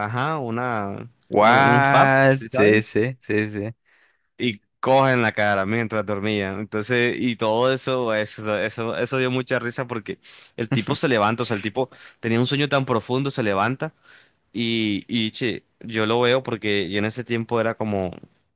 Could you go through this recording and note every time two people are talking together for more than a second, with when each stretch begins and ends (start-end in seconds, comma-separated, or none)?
1.3-2.9